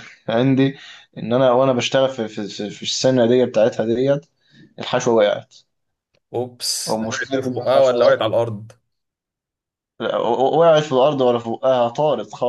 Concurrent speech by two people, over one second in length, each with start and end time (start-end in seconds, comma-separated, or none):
6.9-8.3